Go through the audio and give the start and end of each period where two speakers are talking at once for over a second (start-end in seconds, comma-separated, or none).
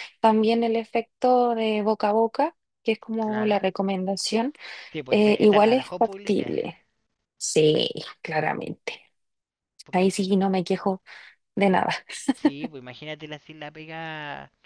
5.1-6.5